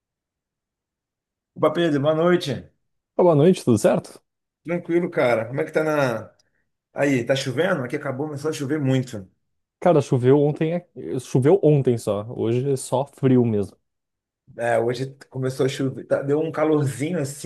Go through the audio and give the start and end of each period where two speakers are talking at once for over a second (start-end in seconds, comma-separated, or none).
none